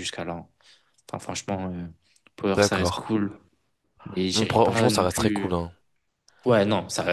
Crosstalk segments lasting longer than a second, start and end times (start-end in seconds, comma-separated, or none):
4.3-5.6